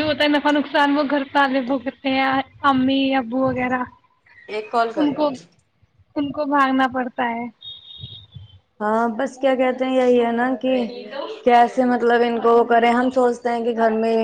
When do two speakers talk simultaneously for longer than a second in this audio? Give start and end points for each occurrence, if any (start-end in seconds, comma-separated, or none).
none